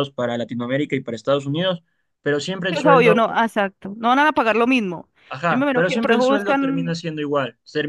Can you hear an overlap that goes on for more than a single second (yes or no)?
yes